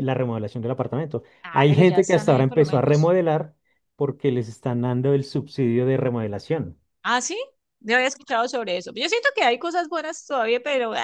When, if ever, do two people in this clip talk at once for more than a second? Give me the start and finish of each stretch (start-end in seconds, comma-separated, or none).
1.4-3.1